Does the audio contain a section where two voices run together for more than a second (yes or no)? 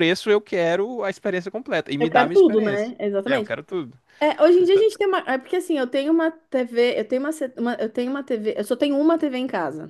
yes